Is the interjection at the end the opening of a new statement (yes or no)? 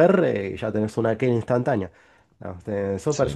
no